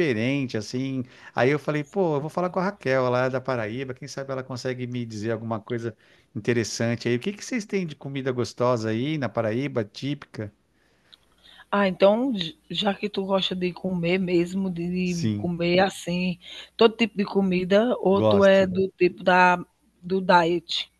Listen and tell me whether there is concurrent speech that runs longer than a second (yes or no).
no